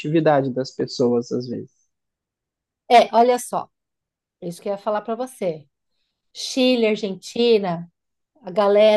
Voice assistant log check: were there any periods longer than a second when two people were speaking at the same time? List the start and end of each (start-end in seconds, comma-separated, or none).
none